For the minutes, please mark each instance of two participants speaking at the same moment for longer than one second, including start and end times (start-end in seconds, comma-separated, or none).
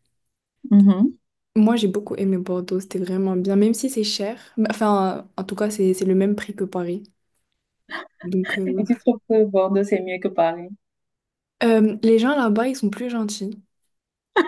none